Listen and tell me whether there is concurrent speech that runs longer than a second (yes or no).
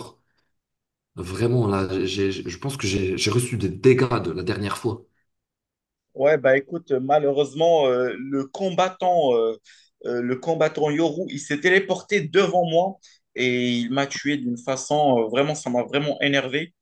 no